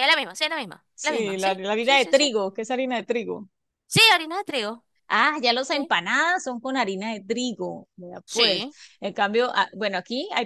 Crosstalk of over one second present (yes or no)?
yes